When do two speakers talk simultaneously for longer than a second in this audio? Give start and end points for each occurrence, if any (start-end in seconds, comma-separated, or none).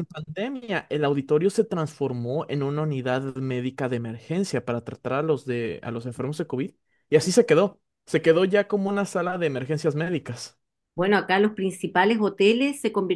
none